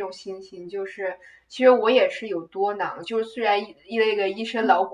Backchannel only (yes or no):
yes